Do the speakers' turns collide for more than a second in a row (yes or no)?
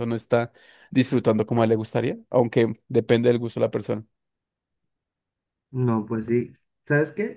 no